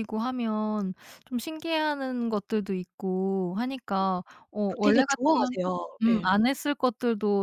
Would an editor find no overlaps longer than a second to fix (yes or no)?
no